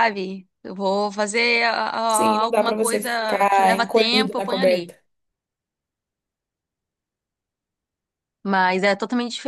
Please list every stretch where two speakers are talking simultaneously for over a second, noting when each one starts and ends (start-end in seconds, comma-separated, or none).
2.1-4.9